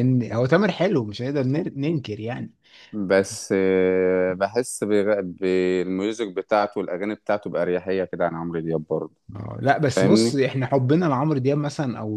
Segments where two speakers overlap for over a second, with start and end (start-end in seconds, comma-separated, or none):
none